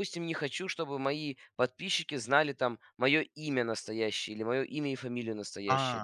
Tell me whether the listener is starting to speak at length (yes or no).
no